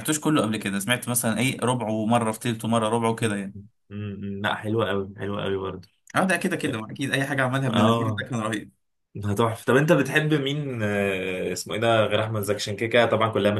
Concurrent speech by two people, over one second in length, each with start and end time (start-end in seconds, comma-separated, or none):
none